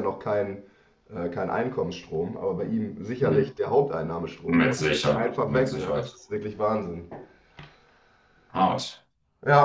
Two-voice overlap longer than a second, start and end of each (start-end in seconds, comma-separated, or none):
4.5-6.2